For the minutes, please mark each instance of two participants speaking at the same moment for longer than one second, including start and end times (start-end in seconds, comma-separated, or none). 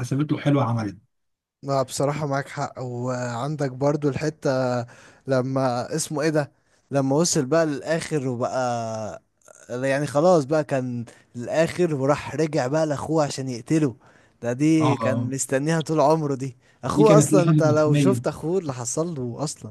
16.9-18.2